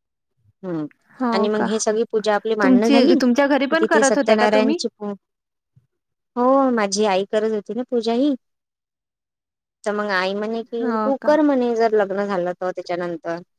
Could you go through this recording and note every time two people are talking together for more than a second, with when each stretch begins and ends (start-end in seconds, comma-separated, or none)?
2.6-4.8